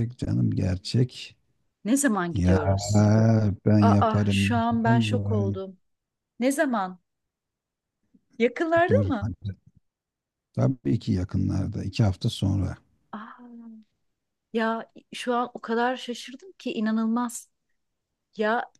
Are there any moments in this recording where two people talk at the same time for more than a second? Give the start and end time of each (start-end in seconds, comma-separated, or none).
3.8-5.6